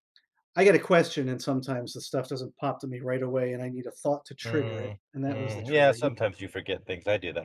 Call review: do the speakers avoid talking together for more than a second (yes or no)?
no